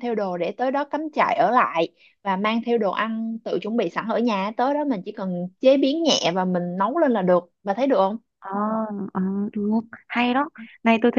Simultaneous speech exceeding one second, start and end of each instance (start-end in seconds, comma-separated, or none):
none